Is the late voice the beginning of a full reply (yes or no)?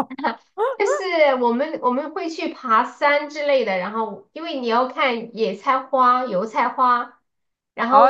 yes